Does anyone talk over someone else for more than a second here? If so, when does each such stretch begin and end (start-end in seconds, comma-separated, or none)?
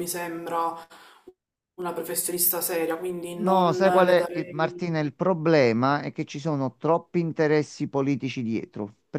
3.3-4.8